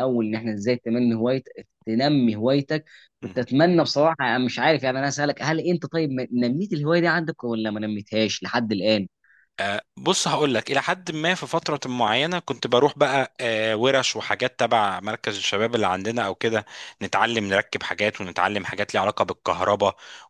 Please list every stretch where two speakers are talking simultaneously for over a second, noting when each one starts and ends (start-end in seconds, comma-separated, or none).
none